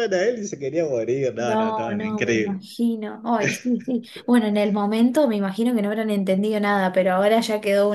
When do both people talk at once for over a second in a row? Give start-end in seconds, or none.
1.4-2.7